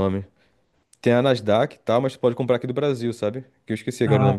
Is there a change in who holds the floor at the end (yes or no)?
yes